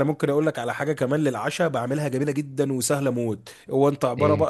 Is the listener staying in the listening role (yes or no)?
yes